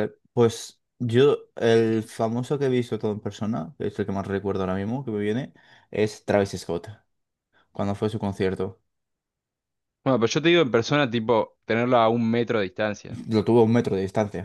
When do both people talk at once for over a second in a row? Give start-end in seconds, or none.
none